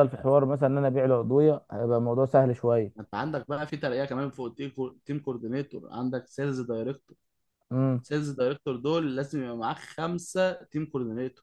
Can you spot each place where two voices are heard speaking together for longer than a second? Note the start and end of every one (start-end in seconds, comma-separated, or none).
none